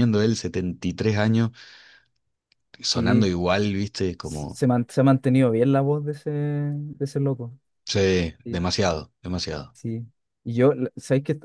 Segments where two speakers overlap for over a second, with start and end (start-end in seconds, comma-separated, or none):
none